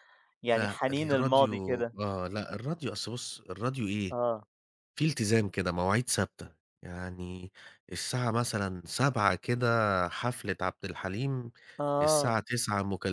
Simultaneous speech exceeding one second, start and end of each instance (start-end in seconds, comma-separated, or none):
0.5-1.9